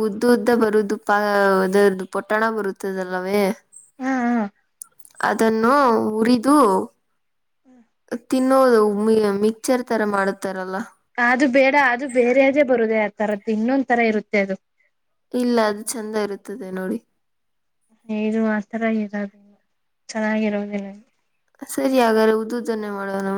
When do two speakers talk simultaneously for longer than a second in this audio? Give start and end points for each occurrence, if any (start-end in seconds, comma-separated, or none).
none